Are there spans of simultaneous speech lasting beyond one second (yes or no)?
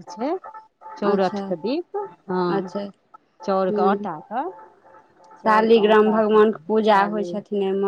yes